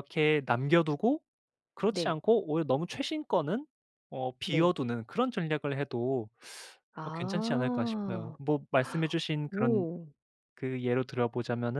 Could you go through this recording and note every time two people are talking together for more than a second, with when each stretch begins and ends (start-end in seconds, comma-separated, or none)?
7.0-8.4